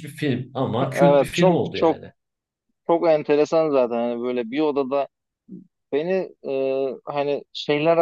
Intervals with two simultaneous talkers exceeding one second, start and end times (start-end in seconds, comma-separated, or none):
0.8-2.0